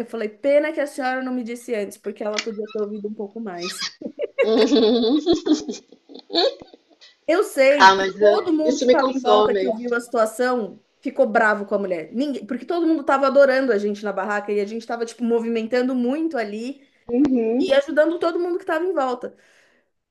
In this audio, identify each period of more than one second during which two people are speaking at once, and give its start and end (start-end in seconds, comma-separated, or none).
7.8-9.7